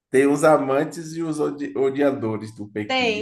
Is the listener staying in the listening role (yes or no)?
no